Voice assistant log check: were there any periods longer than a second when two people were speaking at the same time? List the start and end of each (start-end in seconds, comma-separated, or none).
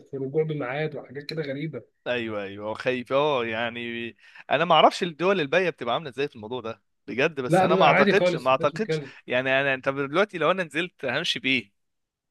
7.5-9.1